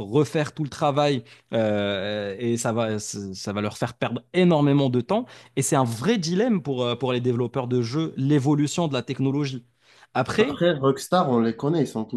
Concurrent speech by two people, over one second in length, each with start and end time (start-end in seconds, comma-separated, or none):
none